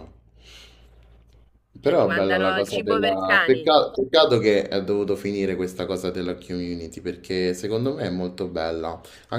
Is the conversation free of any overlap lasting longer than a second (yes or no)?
no